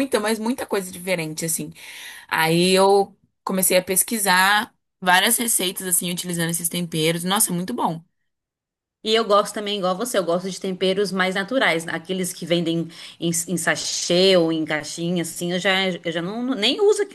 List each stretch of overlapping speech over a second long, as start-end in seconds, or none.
none